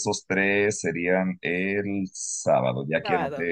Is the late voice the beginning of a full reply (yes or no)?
no